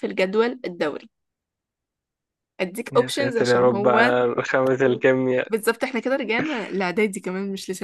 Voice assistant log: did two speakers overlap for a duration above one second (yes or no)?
yes